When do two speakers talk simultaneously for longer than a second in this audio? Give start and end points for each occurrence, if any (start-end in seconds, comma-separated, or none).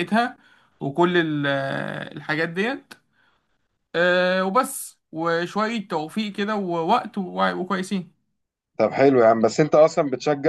none